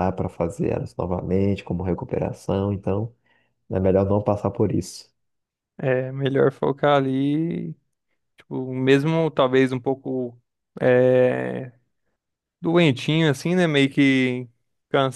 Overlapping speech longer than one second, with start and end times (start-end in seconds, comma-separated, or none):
none